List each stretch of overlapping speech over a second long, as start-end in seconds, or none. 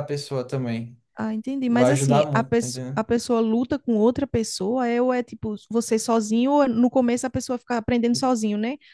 1.7-3.0